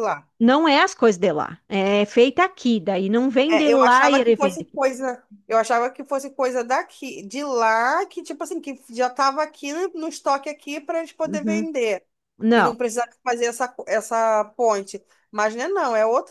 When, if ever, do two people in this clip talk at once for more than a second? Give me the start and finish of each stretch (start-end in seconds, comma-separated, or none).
3.5-4.8